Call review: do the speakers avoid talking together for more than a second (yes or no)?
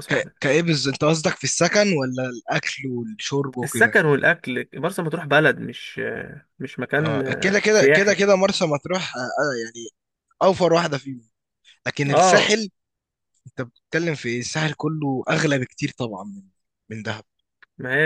no